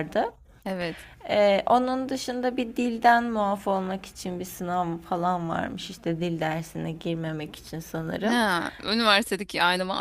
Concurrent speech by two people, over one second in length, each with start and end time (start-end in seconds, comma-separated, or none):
none